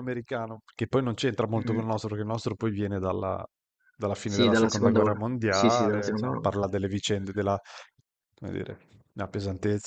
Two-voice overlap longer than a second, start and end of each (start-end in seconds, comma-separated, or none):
4.2-6.4